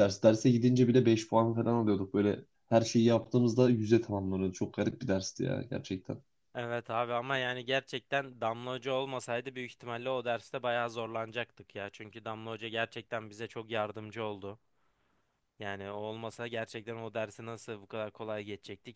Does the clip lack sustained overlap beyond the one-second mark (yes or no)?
yes